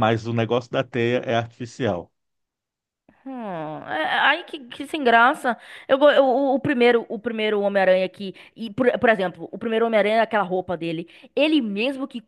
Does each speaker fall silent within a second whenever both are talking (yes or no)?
yes